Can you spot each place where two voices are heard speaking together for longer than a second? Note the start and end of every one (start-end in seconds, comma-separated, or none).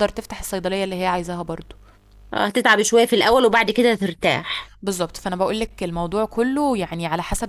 none